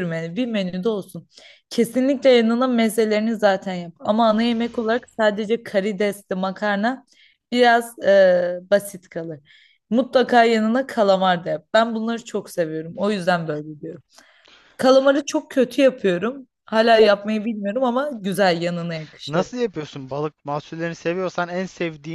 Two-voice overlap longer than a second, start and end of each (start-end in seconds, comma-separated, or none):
none